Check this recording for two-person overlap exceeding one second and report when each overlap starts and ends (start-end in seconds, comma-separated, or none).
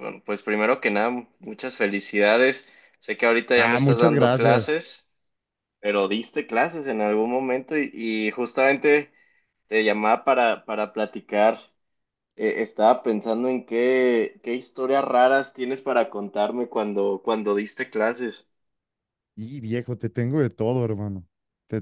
3.5-4.7